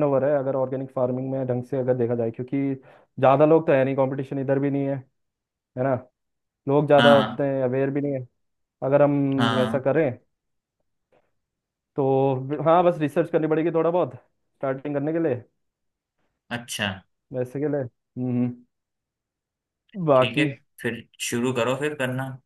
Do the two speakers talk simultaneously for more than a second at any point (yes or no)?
no